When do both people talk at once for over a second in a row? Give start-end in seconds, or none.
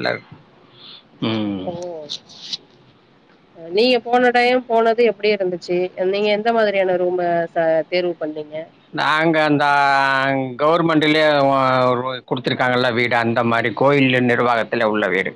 none